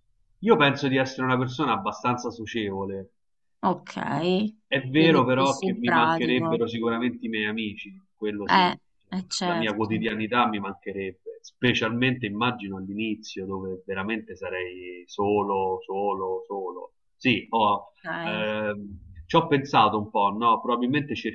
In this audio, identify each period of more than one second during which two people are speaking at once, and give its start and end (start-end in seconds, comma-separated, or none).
4.9-6.6